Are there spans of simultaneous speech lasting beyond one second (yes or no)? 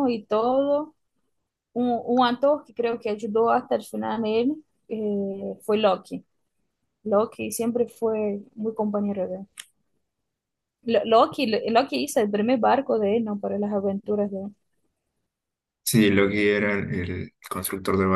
no